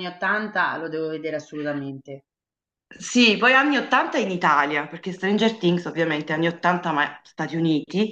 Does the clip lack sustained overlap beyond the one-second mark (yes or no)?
yes